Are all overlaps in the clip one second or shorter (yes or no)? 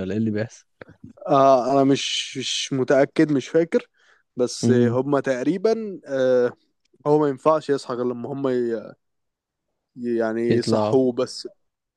yes